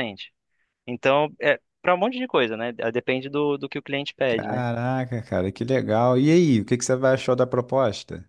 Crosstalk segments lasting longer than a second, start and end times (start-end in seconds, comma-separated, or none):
none